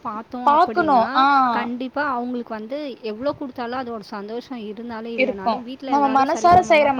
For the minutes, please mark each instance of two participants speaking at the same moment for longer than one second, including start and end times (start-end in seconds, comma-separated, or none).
none